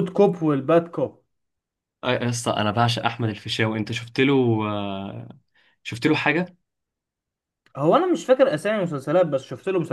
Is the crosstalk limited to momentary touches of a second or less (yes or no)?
yes